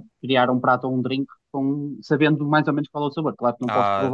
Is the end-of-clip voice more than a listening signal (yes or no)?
yes